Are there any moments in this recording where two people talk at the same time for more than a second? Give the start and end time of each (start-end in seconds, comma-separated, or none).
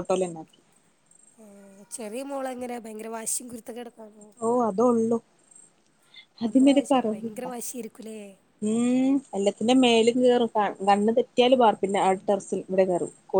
none